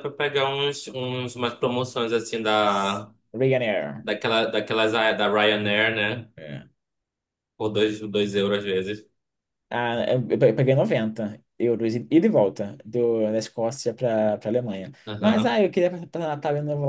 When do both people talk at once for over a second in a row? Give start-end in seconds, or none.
none